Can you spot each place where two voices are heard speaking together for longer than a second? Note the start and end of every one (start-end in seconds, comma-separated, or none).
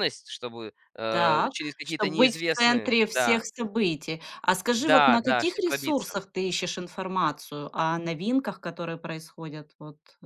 1.1-3.4, 4.7-6.1